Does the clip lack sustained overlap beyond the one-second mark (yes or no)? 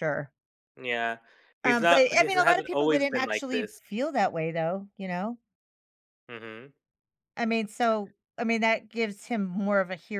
no